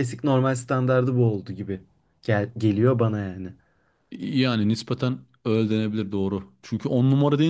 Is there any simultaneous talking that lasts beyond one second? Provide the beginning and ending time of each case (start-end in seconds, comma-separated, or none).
none